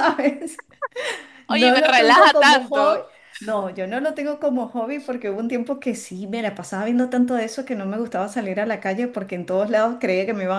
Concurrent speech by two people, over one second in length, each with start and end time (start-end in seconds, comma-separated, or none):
1.5-3.0